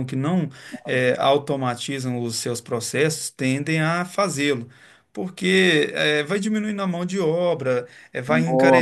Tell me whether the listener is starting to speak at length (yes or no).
no